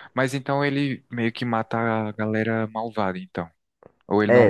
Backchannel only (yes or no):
no